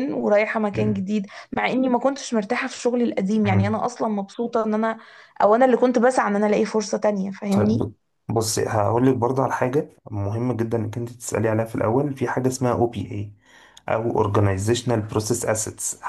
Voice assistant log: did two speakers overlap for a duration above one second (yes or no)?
no